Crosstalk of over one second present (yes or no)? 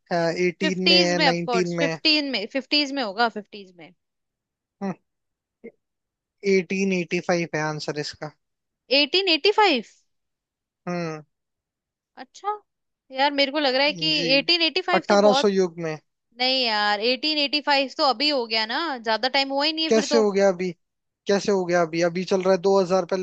yes